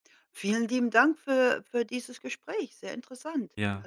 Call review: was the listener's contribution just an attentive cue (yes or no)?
no